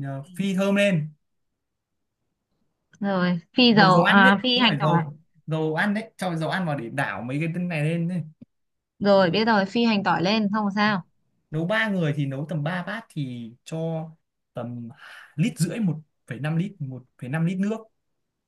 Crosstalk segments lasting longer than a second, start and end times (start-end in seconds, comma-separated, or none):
3.7-5.0